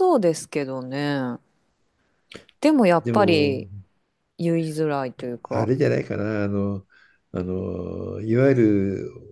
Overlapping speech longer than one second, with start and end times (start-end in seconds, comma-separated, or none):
none